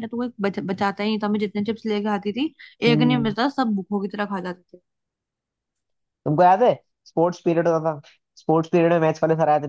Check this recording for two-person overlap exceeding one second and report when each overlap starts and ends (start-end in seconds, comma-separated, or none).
none